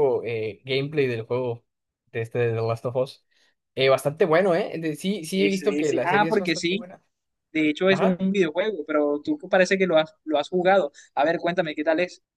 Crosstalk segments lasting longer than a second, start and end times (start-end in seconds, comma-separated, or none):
5.3-6.9